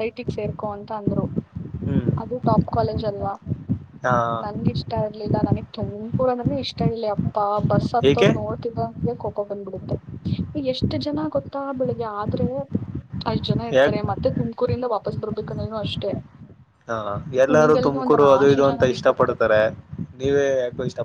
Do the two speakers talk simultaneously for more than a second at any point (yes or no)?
yes